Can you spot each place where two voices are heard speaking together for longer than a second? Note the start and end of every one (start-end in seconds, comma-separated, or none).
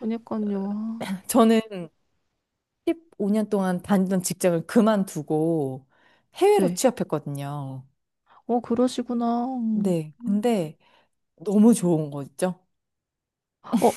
none